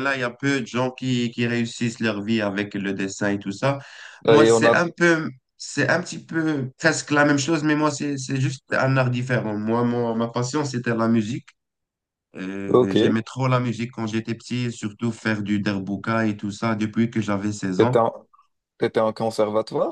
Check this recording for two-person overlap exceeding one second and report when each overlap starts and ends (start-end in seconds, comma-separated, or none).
none